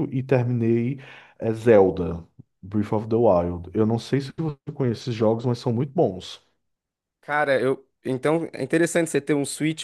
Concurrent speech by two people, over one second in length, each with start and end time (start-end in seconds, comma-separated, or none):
none